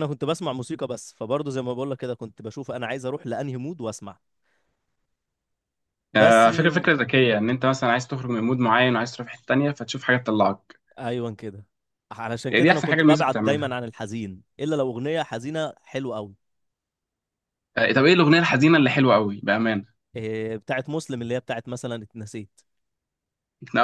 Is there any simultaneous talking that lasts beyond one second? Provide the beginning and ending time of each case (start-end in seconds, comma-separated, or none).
12.5-13.7